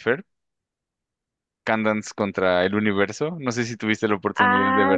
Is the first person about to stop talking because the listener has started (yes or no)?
yes